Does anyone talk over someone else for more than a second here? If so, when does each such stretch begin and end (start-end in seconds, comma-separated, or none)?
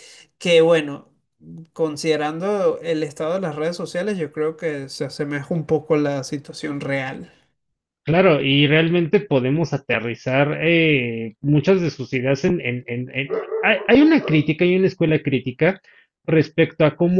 none